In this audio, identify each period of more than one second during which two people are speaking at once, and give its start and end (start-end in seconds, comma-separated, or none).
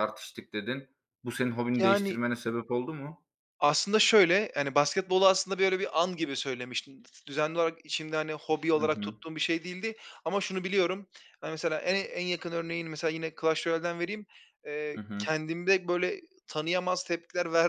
none